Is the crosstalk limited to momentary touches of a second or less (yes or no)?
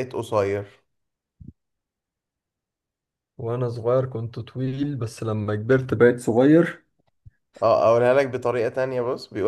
yes